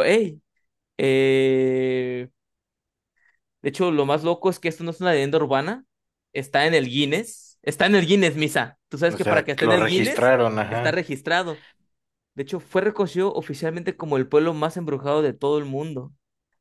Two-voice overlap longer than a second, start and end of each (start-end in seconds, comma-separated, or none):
9.1-11.0